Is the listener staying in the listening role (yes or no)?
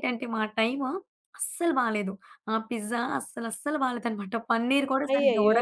no